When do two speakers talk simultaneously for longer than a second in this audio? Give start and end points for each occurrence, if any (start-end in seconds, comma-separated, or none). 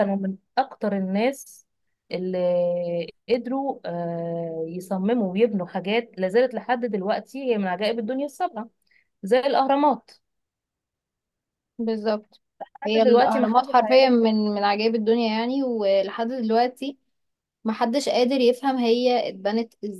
12.9-14.1